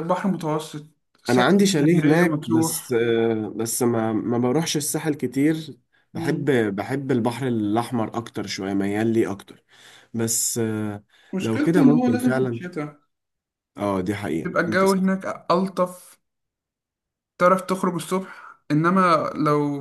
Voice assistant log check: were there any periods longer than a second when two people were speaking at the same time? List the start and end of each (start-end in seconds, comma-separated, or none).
1.3-3.0, 11.4-12.6